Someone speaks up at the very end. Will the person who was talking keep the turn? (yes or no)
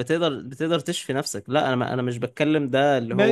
no